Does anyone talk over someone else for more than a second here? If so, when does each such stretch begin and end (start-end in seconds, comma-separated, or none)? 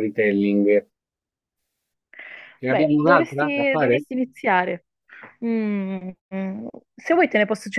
2.7-4.0